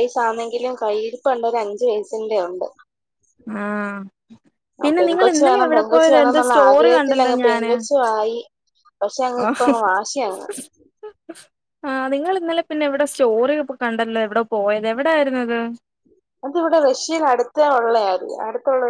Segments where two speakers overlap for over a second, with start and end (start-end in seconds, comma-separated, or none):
4.8-7.7